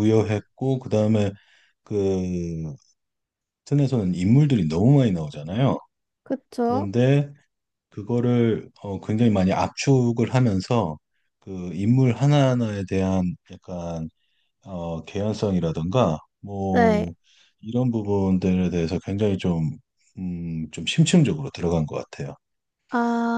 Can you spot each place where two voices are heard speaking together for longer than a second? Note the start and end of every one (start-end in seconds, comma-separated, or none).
none